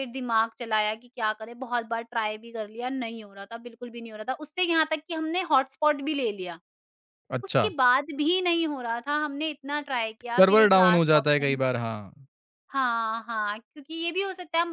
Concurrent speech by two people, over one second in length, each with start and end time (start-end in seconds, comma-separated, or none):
10.3-11.6